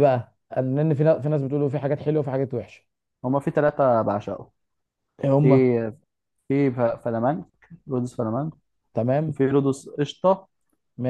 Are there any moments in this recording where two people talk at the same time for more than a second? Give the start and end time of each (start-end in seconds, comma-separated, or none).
none